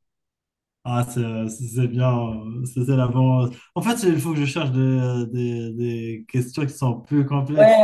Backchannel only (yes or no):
no